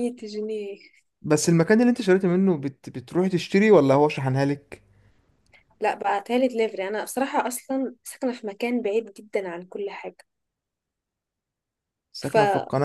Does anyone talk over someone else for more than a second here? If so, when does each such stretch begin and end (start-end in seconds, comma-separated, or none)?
none